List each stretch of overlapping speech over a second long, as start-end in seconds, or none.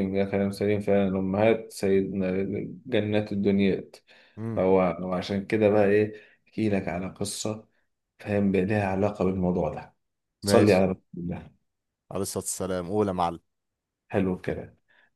none